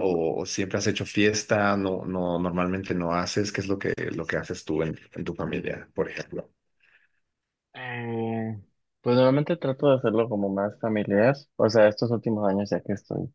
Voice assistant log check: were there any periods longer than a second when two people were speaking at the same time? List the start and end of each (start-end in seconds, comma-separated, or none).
none